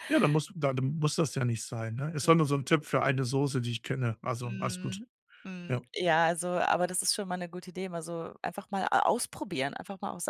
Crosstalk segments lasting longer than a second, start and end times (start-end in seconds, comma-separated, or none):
none